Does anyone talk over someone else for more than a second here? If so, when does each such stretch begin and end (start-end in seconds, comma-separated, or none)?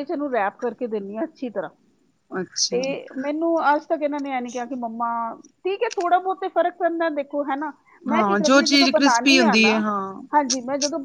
8.1-9.8